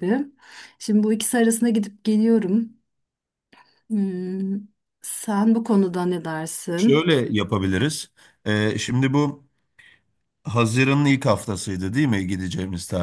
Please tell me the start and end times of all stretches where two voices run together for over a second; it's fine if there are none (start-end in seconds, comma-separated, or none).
none